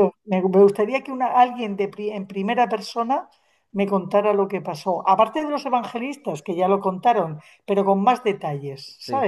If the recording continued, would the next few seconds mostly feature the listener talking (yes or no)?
yes